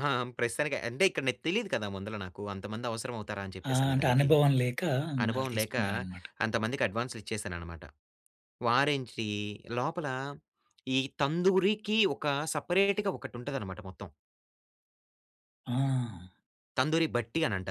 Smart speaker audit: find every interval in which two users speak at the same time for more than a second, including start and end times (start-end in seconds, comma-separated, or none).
none